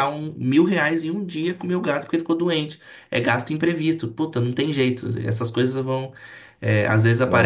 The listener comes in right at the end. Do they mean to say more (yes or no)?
no